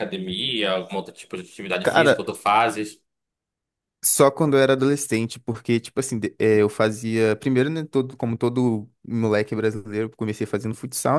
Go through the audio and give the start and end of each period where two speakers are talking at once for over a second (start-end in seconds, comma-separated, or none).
none